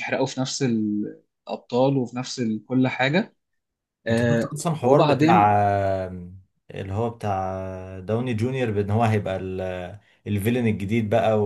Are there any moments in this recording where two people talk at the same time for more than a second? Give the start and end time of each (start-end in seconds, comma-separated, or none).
4.1-5.5